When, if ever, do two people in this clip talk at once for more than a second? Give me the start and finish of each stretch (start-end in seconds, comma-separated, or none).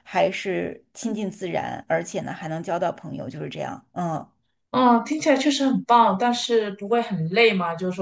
none